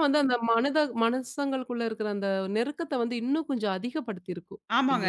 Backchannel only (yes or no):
no